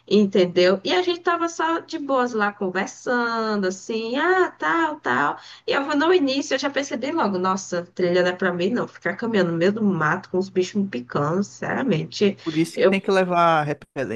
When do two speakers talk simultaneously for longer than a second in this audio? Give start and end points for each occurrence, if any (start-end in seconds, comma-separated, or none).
none